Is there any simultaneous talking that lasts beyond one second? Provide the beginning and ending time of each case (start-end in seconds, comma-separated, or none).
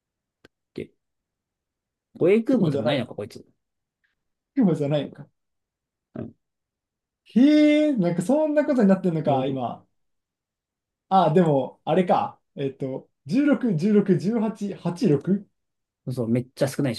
none